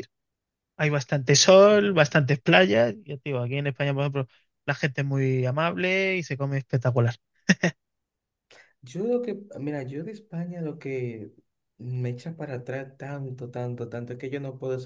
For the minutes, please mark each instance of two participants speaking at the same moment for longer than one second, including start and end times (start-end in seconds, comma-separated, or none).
none